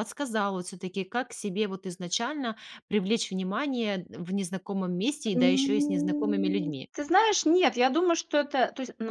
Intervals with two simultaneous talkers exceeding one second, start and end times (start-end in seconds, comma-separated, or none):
5.3-6.9